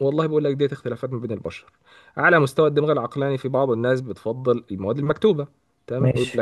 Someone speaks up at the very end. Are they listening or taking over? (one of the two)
listening